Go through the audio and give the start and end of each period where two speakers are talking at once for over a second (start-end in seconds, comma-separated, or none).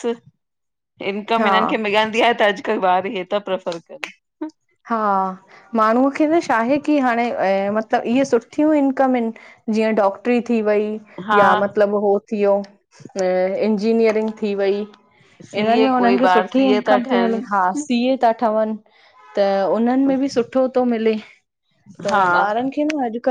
15.6-17.8